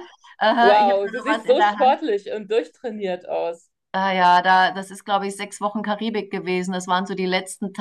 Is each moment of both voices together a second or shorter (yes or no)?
no